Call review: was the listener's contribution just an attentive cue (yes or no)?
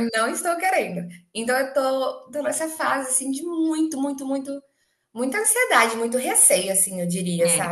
yes